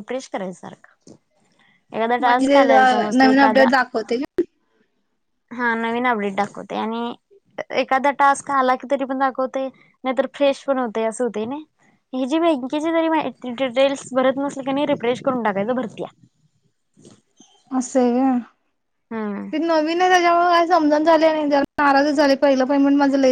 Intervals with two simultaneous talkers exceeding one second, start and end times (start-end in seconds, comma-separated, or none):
2.2-3.7